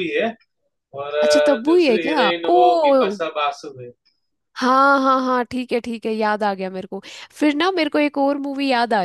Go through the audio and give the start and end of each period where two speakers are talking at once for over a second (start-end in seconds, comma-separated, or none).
1.2-3.2